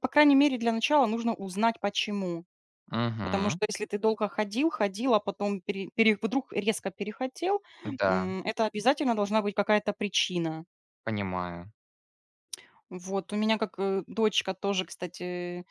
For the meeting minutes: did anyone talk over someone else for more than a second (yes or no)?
no